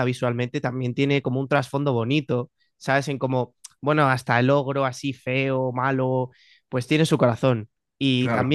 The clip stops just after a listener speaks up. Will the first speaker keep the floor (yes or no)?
yes